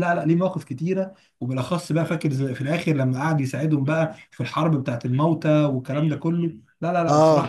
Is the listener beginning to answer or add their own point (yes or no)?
yes